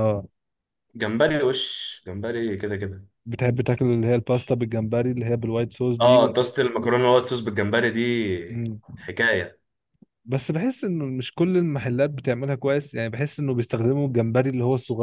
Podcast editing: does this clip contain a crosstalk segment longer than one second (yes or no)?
no